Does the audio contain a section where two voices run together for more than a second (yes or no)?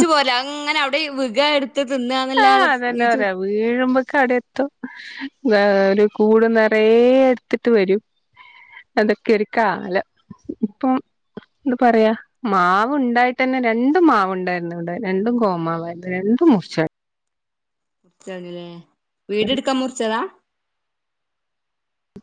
no